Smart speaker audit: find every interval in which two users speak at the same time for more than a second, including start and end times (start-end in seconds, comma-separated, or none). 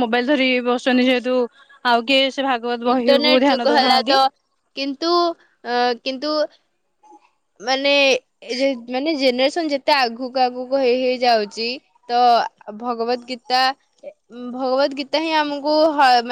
2.9-4.2